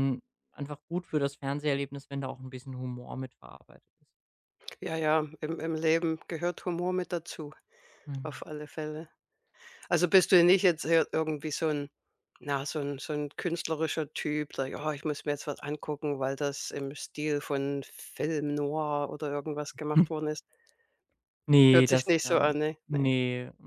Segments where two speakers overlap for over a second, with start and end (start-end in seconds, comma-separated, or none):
21.7-23.1